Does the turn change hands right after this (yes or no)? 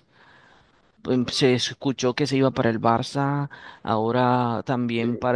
no